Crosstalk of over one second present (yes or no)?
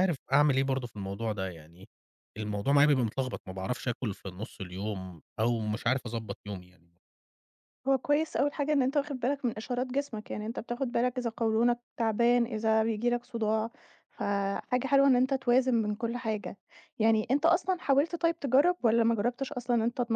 no